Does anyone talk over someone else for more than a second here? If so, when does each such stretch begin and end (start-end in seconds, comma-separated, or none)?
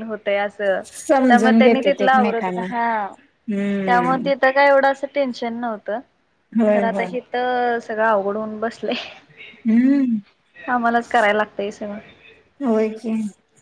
1.3-2.6